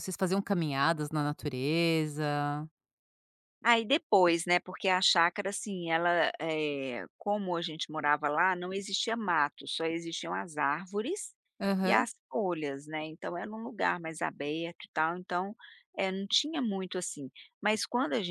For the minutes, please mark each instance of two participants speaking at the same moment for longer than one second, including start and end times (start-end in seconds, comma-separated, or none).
none